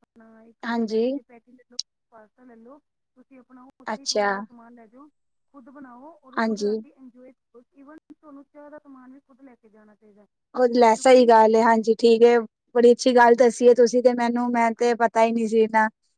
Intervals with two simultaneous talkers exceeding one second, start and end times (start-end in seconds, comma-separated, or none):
none